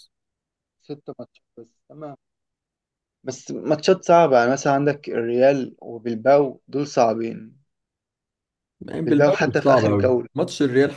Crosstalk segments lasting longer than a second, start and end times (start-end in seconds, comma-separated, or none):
9.1-10.3